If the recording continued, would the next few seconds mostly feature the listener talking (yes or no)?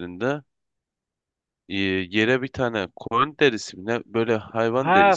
yes